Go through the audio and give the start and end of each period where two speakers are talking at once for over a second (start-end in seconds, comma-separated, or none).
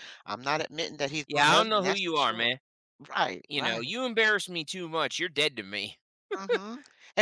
1.2-2.5